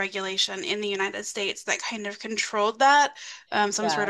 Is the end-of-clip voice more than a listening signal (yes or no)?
no